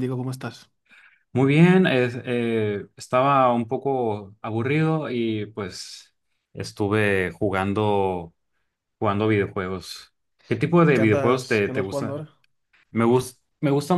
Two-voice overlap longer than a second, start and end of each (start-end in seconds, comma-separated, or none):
10.9-12.2